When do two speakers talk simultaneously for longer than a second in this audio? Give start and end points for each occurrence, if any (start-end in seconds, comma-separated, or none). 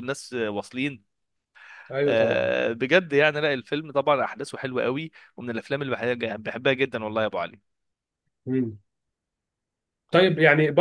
none